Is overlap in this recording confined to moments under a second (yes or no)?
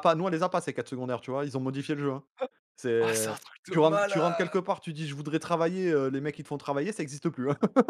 no